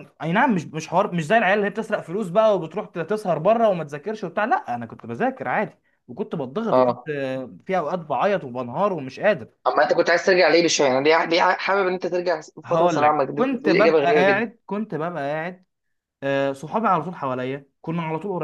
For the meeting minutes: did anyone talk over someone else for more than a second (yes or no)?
yes